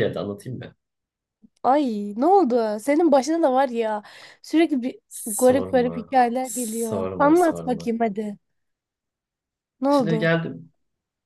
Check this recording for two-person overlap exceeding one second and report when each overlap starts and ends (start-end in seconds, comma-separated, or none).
5.4-7.9